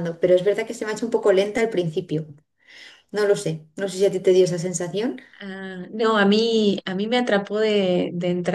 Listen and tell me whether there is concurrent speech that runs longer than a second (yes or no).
no